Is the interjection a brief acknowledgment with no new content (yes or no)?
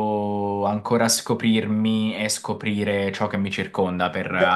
no